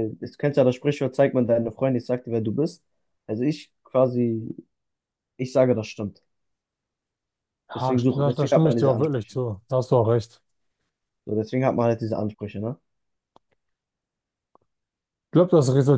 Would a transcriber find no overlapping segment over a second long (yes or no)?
no